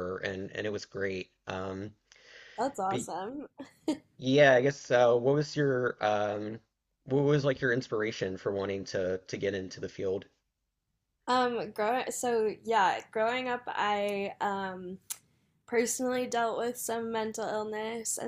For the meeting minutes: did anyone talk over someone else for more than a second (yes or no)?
no